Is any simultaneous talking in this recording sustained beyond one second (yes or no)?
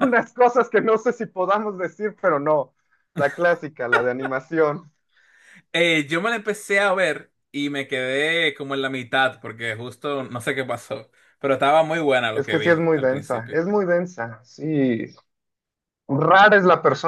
yes